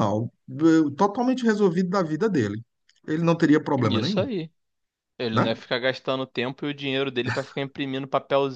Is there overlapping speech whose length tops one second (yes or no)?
no